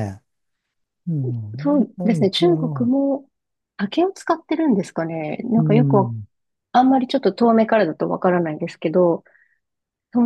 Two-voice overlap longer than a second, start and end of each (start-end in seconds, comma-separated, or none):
1.6-2.9